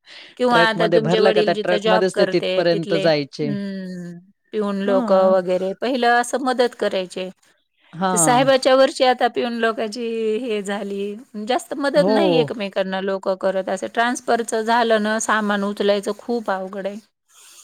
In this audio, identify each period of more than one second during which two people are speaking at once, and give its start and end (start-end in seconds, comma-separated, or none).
0.5-3.5